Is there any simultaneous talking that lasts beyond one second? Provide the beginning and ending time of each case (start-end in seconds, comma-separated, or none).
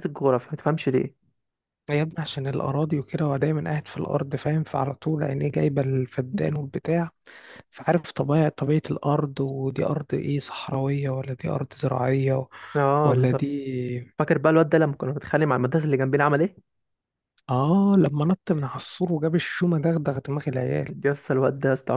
none